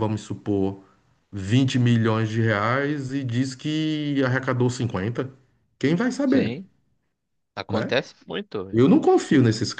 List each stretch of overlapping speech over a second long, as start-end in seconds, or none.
none